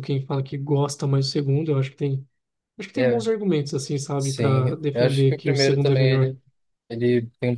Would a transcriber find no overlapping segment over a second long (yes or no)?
no